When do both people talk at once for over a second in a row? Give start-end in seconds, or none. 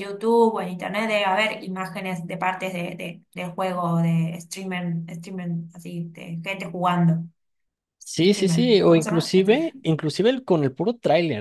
8.2-9.5